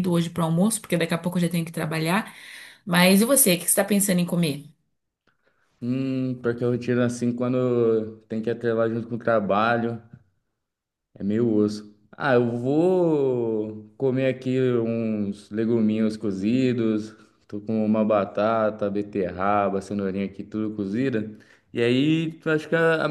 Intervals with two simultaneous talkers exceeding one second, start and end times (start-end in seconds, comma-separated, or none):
none